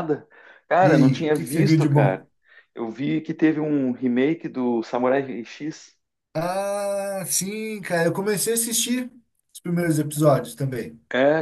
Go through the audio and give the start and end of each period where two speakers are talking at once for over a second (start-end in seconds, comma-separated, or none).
0.8-2.2